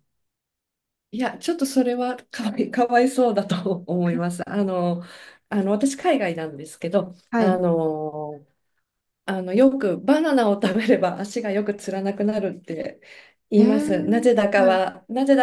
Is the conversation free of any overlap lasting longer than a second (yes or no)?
no